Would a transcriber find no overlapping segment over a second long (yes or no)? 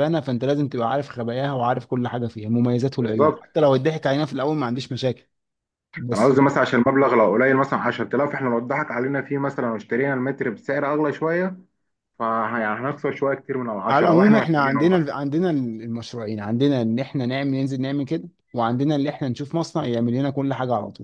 no